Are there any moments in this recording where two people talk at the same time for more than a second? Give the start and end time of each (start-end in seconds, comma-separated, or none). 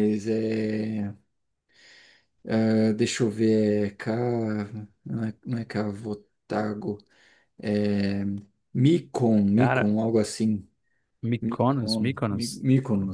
11.4-12.6